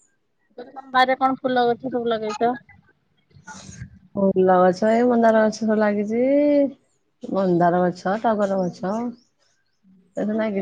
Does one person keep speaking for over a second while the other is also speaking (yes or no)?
no